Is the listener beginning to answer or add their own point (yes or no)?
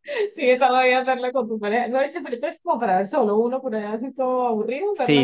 yes